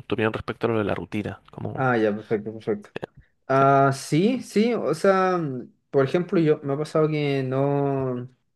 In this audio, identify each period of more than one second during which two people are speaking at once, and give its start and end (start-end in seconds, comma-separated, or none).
none